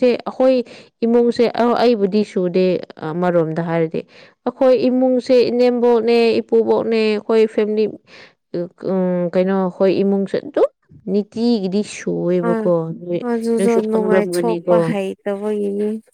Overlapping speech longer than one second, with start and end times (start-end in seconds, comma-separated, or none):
13.6-14.8